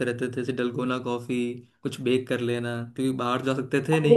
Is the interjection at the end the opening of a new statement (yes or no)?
no